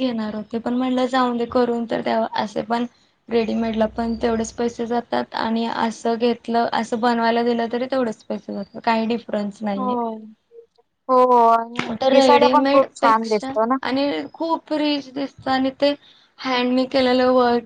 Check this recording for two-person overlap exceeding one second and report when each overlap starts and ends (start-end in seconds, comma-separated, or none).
11.9-13.5